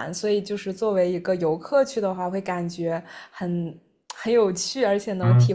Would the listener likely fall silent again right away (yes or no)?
yes